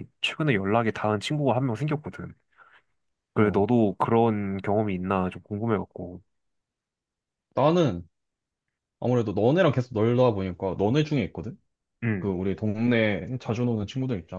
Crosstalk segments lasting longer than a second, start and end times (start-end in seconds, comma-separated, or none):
none